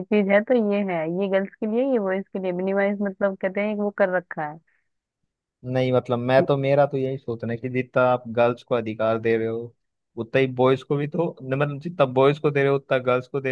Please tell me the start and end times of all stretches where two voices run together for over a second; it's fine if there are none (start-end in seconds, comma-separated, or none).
none